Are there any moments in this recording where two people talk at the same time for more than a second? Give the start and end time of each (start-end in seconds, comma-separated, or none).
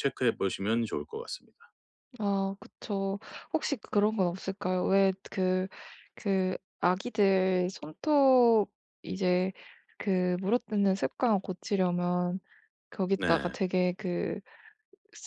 none